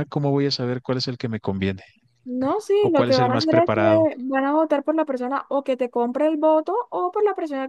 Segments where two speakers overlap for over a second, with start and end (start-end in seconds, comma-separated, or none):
2.8-4.1